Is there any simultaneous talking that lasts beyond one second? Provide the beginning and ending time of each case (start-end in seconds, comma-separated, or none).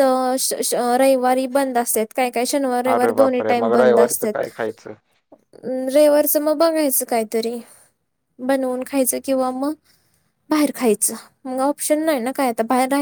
2.9-4.5